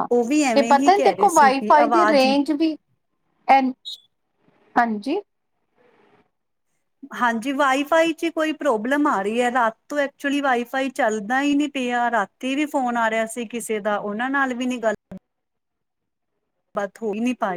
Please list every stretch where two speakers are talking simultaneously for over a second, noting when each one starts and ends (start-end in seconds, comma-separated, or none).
0.6-2.3